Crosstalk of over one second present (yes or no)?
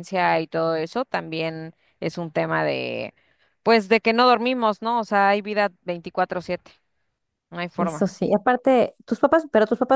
no